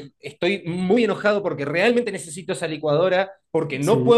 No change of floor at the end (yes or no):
yes